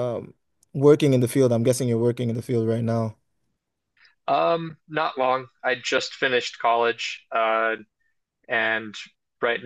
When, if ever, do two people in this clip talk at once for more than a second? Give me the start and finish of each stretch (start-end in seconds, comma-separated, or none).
none